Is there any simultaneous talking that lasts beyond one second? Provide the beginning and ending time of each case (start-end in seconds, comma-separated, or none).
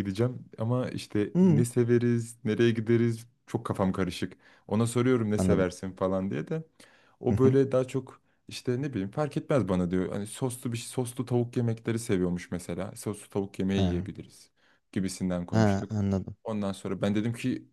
none